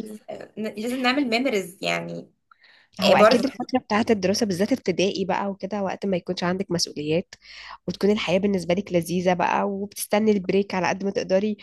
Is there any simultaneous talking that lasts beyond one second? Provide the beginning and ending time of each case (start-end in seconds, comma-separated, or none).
none